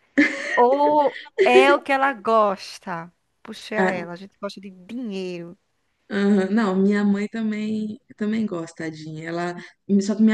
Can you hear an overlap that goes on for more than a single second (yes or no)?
no